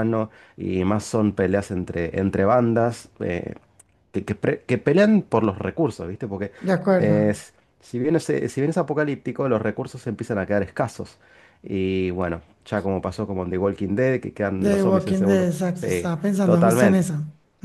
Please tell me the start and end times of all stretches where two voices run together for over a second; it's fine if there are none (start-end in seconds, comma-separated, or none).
14.6-17.0